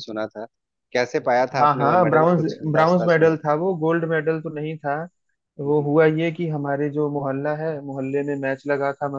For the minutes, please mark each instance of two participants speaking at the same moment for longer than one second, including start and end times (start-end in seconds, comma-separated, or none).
1.6-3.3